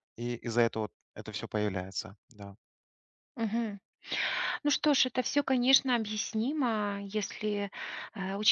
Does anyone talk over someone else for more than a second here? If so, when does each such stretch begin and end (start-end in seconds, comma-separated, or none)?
none